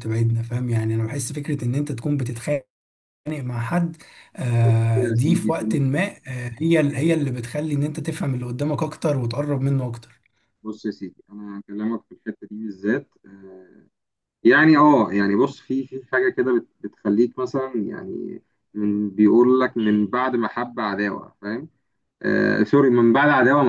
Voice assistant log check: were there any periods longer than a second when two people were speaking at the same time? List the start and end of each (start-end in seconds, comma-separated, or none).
4.6-6.0